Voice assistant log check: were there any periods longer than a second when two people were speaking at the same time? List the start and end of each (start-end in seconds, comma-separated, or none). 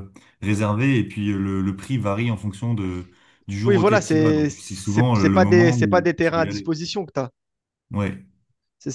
3.6-6.7